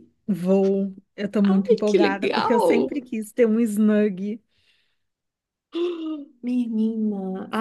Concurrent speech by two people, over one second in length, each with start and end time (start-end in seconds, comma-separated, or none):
1.5-2.7